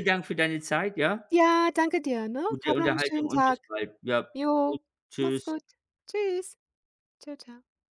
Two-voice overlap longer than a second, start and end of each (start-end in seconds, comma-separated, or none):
2.5-3.7